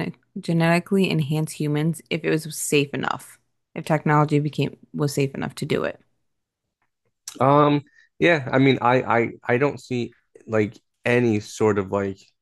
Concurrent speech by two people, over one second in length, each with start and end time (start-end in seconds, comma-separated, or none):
none